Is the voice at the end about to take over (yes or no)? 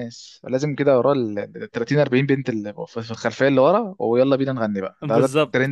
yes